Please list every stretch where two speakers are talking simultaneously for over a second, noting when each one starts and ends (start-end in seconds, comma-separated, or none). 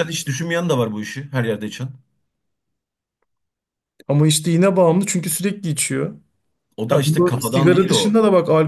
6.9-8.2